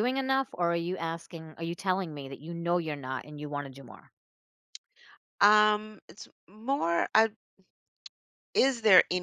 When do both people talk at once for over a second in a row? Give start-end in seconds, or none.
none